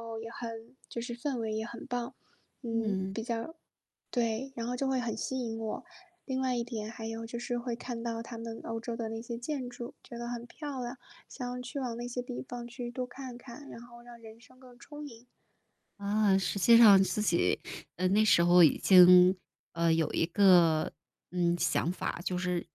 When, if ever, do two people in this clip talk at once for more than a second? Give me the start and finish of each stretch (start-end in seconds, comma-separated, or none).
none